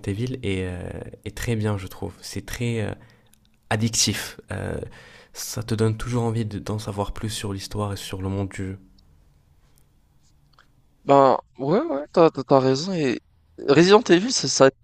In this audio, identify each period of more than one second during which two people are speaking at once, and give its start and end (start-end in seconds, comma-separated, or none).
none